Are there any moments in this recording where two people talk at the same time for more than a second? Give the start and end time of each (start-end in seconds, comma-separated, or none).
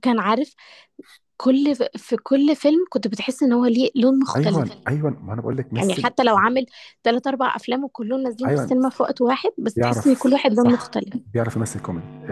9.8-11.2